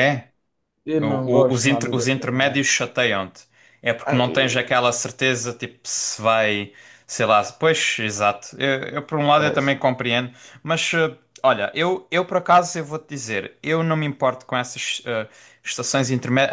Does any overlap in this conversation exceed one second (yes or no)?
yes